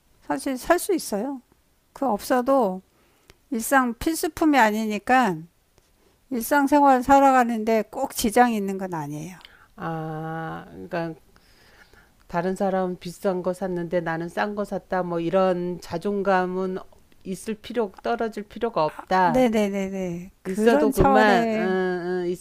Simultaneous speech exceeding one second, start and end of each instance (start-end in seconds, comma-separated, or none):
20.4-21.8